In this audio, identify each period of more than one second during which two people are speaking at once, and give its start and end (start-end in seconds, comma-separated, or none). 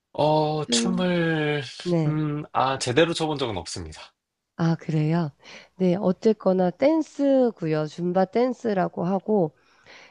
none